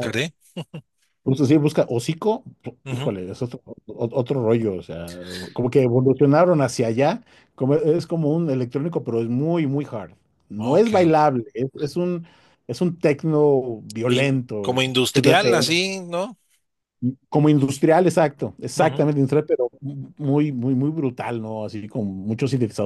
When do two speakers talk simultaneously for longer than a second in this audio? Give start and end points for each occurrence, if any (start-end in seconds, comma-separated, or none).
14.1-15.7